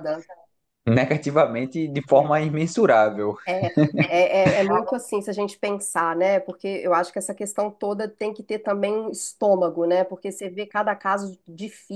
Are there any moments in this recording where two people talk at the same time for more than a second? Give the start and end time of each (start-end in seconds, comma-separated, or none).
none